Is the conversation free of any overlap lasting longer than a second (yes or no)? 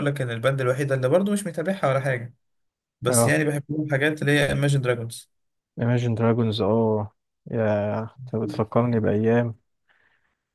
yes